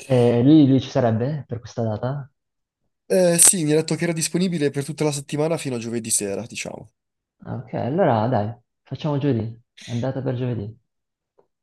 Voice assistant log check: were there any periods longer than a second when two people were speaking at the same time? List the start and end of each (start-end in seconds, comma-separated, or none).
none